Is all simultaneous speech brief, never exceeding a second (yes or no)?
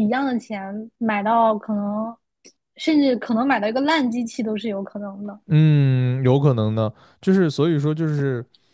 yes